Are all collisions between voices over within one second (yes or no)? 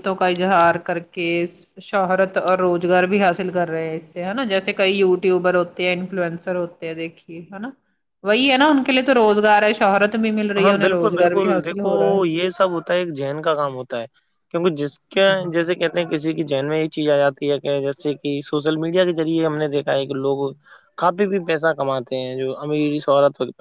no